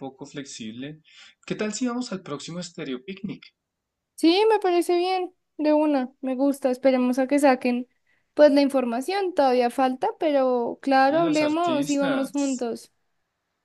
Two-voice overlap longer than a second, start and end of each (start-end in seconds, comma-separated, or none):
11.1-12.7